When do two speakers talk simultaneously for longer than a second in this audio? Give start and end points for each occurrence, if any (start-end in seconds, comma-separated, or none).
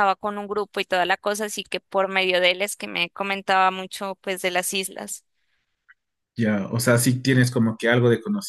none